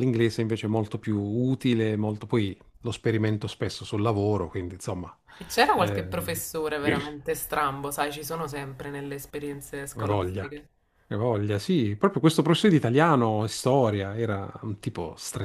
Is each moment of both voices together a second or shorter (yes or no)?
yes